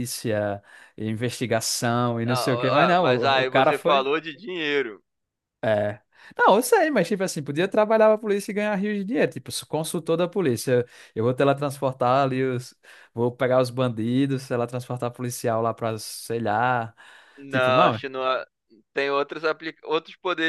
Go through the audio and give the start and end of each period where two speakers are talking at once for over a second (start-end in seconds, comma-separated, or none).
2.3-4.1